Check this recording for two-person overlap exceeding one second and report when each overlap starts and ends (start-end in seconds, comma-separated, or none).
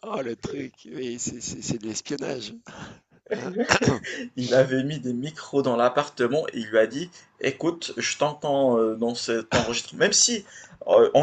none